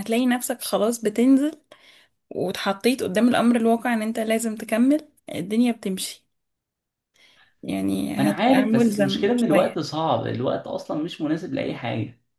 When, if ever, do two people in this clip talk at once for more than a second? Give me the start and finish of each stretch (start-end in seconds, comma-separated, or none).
8.2-9.8